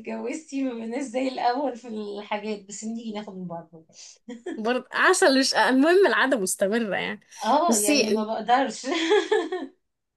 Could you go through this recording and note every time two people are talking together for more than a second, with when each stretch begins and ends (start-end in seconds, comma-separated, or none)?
none